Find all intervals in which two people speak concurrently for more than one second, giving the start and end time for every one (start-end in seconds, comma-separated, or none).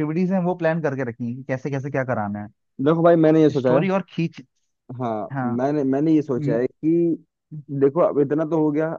none